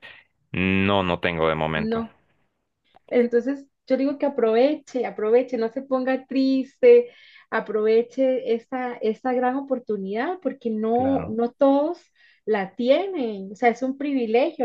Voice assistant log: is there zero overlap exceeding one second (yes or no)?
yes